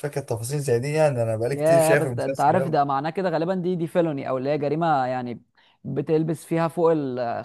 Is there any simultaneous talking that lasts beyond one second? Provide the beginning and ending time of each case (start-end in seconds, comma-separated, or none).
1.5-2.8